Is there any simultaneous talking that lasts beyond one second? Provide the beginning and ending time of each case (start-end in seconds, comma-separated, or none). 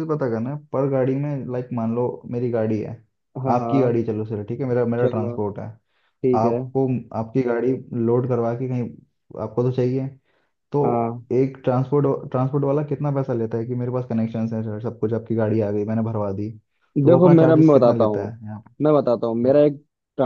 17.1-18.4